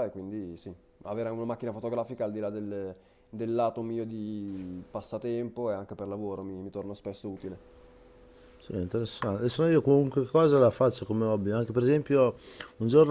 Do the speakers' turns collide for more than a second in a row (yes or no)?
no